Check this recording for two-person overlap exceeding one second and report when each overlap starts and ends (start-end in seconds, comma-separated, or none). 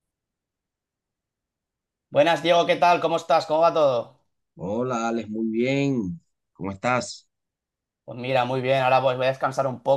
none